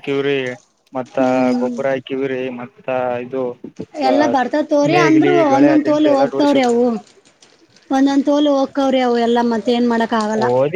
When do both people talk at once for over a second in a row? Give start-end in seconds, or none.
4.9-6.7